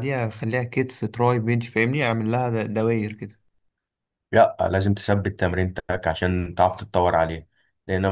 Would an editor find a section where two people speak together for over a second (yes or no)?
no